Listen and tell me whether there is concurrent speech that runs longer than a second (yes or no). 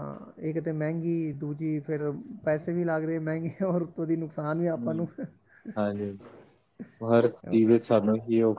no